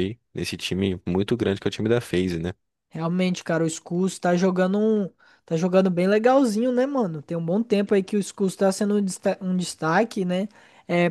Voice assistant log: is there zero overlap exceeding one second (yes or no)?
yes